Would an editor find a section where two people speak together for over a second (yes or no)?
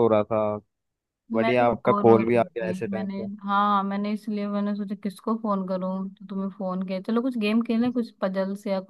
yes